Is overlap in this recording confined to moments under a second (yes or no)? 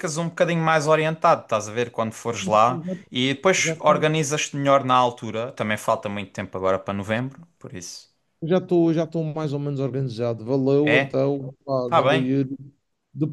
yes